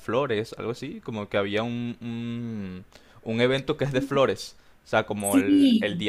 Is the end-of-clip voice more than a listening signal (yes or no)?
no